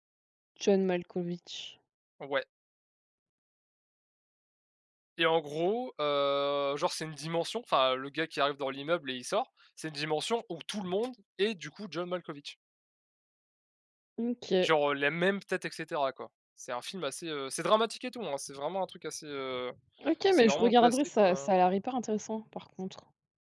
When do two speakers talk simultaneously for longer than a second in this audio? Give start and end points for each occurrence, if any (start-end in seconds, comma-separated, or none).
20.3-21.5